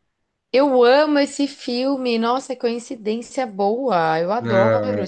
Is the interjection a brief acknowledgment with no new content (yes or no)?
no